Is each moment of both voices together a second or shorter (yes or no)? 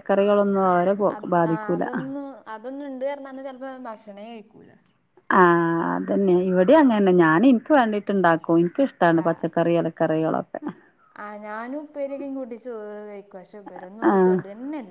yes